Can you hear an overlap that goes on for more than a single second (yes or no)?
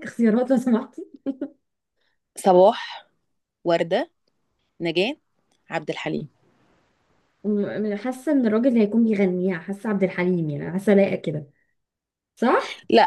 no